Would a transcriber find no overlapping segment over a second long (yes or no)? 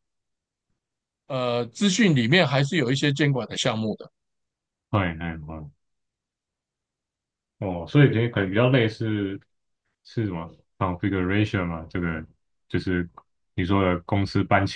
yes